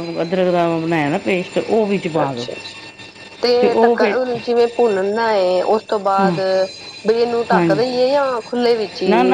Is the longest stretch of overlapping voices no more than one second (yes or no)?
yes